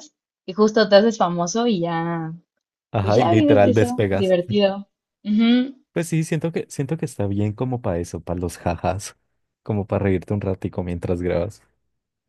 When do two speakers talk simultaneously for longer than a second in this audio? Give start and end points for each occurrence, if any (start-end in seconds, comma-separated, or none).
3.0-4.4